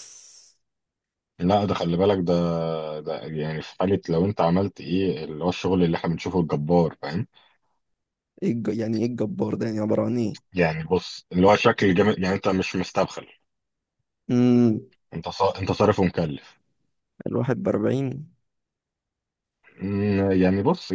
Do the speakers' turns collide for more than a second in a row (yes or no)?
no